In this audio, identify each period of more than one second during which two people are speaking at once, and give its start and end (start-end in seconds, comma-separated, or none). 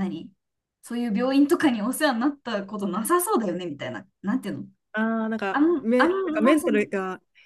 5.5-6.9